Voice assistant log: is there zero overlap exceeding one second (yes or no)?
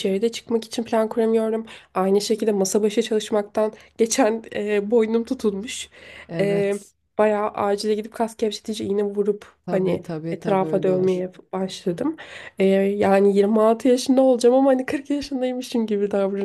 no